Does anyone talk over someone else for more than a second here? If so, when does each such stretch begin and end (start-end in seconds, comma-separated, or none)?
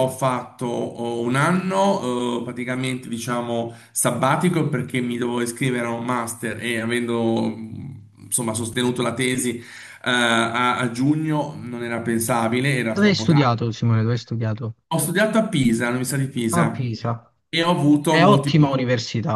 none